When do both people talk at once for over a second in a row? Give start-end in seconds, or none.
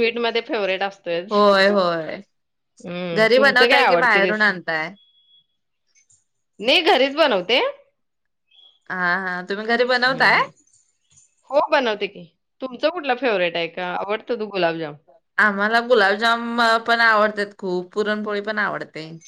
3.2-4.5